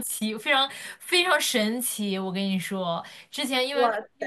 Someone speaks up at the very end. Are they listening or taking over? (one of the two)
listening